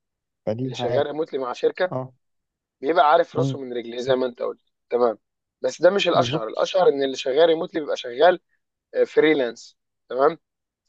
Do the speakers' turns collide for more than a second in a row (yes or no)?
no